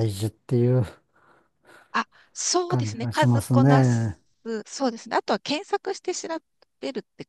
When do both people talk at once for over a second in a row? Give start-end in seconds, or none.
2.7-4.2